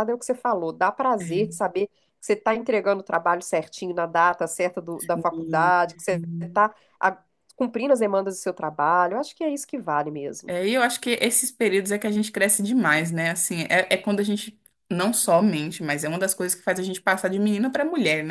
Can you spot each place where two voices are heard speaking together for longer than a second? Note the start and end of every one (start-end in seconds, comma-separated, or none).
5.0-6.7